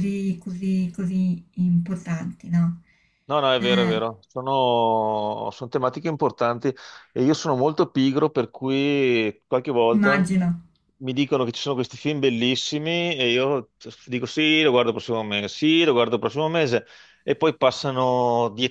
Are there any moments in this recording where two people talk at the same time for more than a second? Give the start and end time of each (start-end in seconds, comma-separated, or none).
none